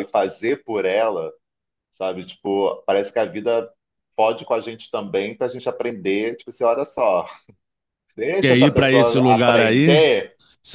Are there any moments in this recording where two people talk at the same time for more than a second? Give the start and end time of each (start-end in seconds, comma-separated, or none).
8.4-10.1